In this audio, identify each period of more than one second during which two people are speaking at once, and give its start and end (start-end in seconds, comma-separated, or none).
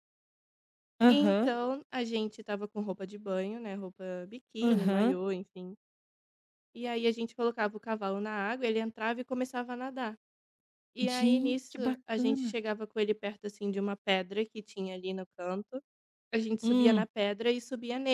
11.0-12.6